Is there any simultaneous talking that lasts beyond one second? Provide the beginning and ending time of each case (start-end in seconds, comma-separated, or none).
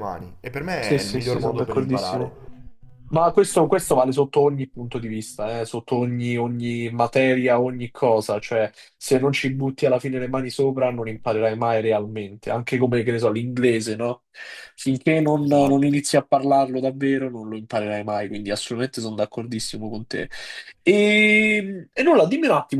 0.8-2.4